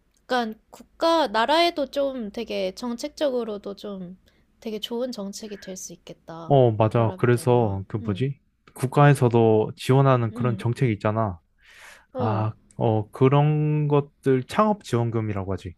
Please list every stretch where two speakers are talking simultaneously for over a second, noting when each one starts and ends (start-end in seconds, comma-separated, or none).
6.5-8.3